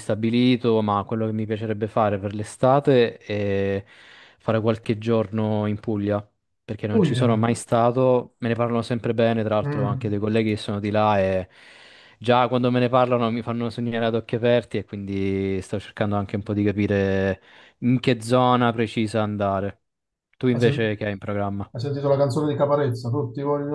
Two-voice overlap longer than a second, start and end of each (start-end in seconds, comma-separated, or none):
none